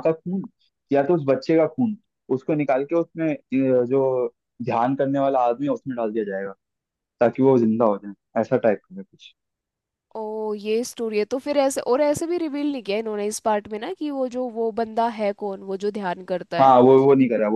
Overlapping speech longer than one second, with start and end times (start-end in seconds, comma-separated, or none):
none